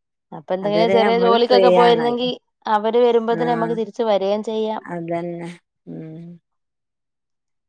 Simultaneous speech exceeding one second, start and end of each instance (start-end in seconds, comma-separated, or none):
0.7-2.3